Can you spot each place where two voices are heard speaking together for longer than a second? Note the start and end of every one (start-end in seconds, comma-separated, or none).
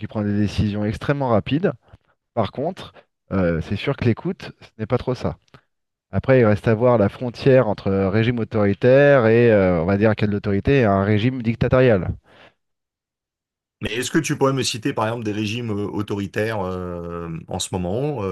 none